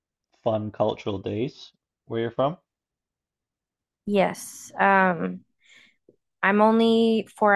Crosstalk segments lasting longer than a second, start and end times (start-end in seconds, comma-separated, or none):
none